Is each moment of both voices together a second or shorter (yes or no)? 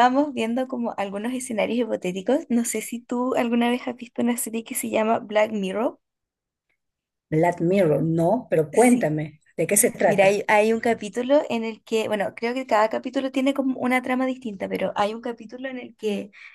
yes